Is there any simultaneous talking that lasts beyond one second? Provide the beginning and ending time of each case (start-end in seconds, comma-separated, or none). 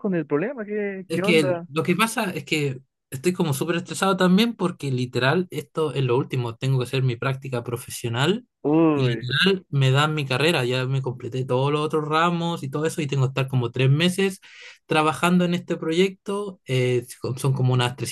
none